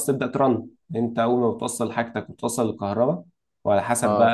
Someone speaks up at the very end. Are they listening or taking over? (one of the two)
listening